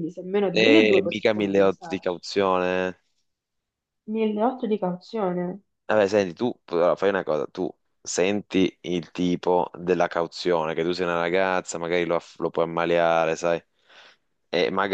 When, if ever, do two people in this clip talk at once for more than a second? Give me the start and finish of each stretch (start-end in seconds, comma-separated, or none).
0.5-2.2